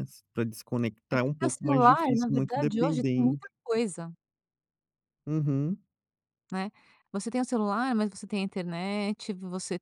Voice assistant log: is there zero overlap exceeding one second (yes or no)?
no